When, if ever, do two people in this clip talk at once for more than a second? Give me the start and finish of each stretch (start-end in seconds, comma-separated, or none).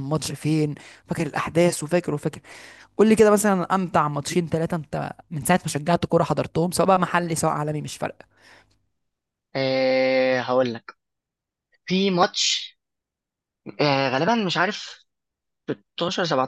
none